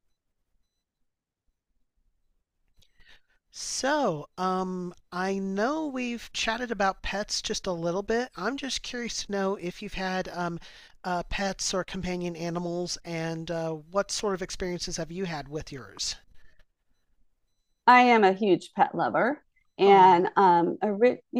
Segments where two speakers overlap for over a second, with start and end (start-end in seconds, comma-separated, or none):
none